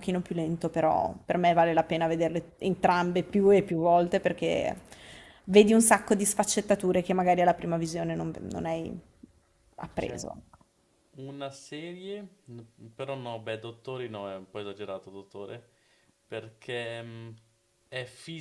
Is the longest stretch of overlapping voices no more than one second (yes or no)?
yes